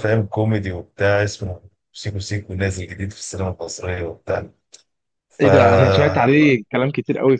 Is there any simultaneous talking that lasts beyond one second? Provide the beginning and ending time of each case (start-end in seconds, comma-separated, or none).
none